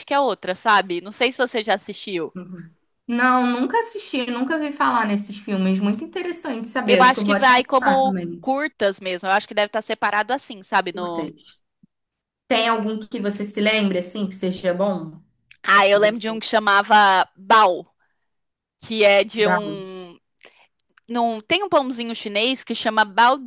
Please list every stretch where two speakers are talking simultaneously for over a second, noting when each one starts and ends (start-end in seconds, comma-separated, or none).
6.8-8.5